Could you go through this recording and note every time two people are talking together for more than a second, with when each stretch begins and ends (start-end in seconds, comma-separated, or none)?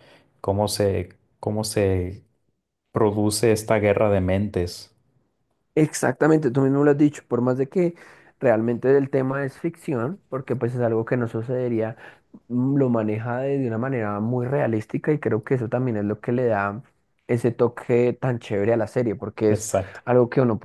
none